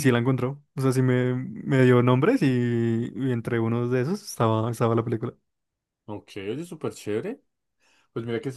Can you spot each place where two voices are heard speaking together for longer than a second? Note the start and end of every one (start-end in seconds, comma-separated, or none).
none